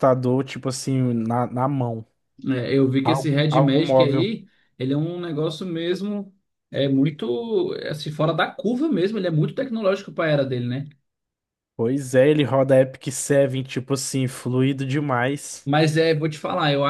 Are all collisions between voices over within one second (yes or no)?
no